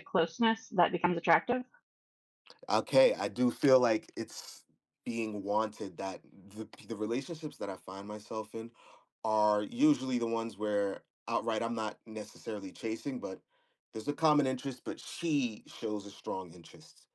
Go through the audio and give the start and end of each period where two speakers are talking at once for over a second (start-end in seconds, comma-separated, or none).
none